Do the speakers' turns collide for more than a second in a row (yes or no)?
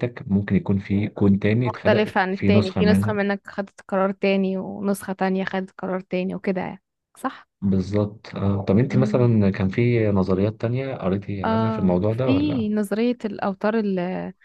yes